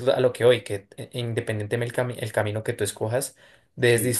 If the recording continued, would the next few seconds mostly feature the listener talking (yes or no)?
no